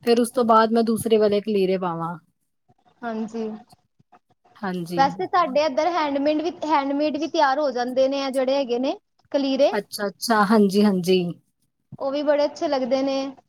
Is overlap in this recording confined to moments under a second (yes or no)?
yes